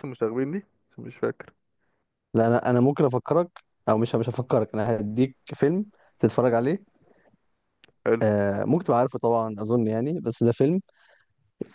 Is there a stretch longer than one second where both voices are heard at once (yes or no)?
no